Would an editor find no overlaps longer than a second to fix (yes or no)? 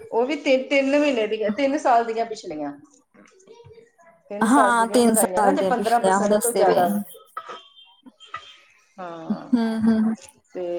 no